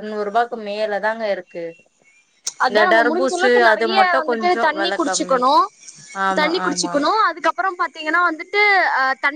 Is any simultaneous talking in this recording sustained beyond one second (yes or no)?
yes